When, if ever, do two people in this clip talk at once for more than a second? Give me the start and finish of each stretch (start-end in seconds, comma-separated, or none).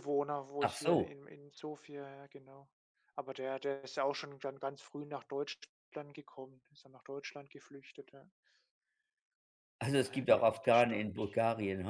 9.9-11.4